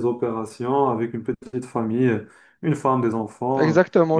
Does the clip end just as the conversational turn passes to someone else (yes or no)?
yes